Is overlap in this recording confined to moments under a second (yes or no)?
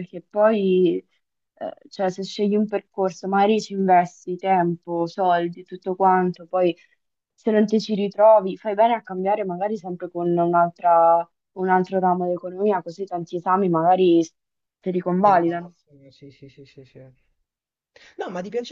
yes